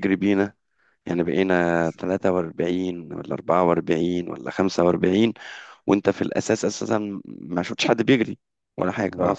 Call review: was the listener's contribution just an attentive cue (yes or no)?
yes